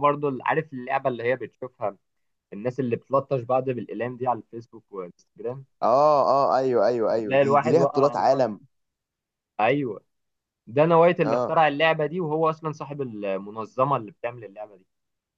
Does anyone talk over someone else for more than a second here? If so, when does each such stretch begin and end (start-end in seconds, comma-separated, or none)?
7.1-8.5